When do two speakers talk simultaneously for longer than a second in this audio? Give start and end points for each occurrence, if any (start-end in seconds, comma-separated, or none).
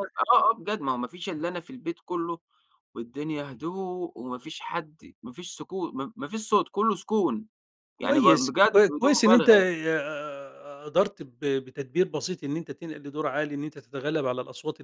8.0-9.6